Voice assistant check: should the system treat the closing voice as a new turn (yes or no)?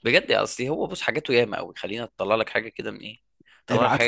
no